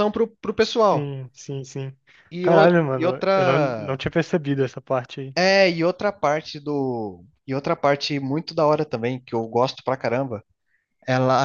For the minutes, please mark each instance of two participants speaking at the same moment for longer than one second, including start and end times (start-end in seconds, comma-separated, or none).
2.4-4.0